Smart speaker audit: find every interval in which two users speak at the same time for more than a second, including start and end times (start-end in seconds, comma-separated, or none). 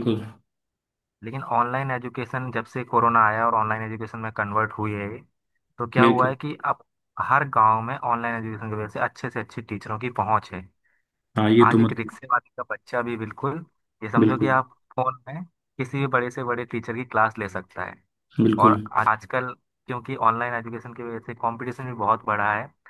none